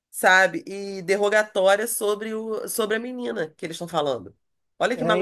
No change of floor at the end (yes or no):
no